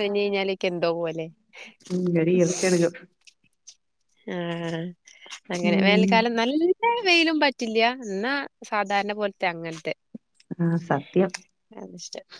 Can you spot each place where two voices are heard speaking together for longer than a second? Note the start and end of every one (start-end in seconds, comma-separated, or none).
none